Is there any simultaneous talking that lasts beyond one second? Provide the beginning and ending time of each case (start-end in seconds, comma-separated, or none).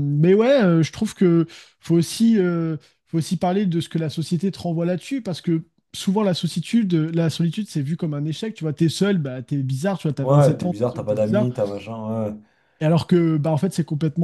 10.2-11.5